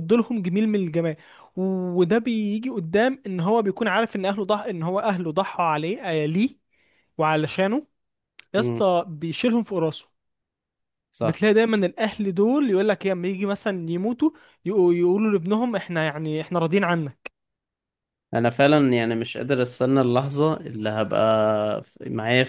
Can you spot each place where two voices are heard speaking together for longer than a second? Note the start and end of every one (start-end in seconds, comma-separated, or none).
none